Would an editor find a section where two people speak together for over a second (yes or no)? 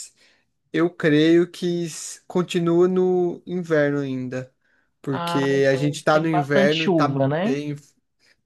yes